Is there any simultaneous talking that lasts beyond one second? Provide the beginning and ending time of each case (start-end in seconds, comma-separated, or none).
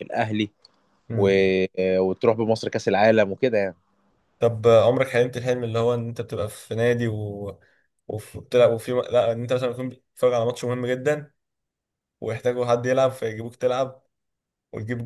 none